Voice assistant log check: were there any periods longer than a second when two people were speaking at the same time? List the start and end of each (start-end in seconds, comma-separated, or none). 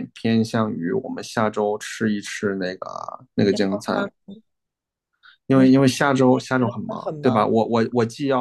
5.5-7.5